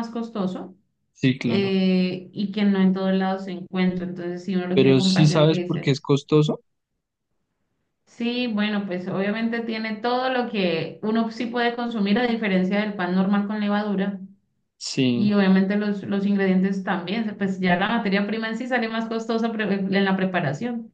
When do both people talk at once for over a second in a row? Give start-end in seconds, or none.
4.7-6.0